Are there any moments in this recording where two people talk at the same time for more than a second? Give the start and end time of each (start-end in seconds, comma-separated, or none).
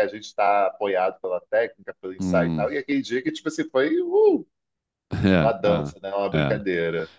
5.3-6.6